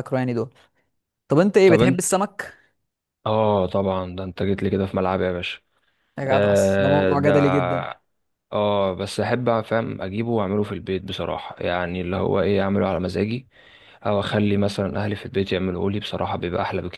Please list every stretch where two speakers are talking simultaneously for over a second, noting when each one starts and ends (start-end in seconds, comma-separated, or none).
6.3-7.5